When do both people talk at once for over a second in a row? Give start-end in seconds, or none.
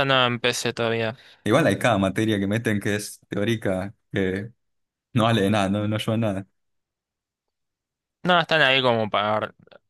none